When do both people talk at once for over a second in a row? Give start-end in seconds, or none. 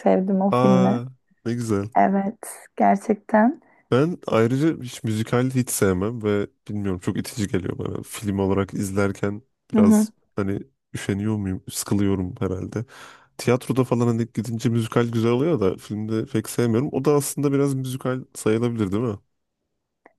none